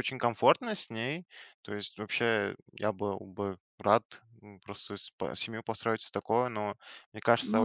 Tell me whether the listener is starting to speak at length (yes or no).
no